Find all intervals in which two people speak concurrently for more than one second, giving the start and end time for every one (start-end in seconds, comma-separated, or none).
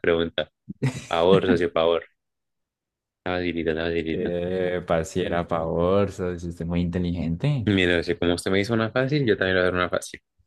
none